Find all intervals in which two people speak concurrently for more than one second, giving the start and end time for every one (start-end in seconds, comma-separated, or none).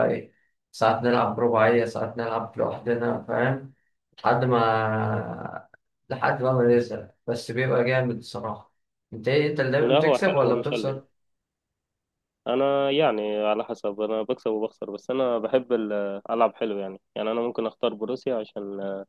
9.8-11.0